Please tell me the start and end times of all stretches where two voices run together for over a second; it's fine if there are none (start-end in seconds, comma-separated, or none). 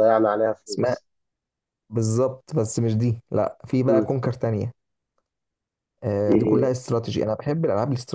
none